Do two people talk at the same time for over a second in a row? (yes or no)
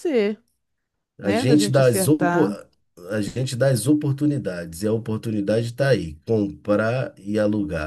yes